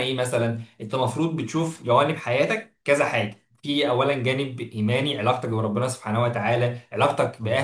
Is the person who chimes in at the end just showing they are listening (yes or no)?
yes